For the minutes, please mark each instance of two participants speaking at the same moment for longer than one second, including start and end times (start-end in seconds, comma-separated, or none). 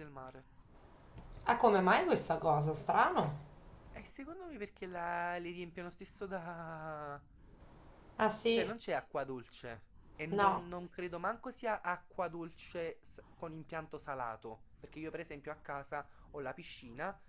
none